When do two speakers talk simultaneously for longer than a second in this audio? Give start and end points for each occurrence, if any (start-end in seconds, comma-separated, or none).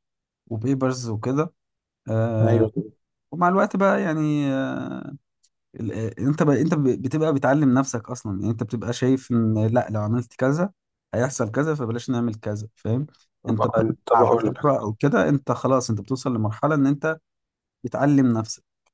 13.5-14.8